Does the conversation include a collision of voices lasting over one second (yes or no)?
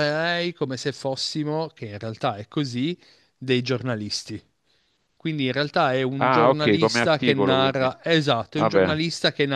yes